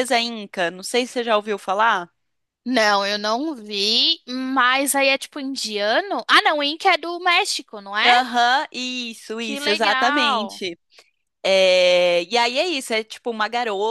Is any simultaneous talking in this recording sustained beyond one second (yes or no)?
yes